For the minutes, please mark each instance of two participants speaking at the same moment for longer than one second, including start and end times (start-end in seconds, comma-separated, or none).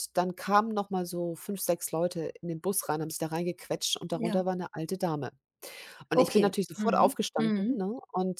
6.2-7.9